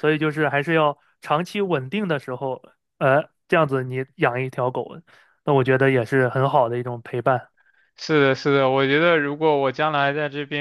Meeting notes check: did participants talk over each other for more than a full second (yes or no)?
no